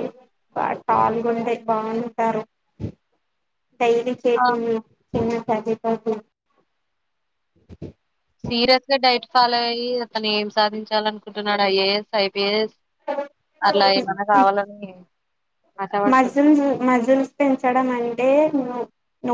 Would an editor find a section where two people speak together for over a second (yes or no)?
no